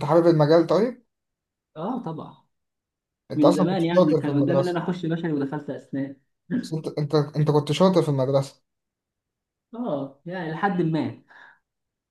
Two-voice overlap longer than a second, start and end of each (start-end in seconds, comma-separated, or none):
3.3-4.8